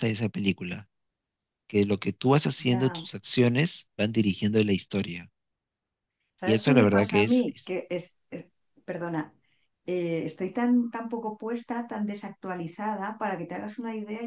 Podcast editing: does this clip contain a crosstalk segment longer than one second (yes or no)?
yes